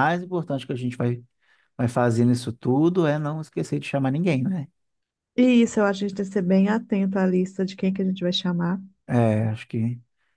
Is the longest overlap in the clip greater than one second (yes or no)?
no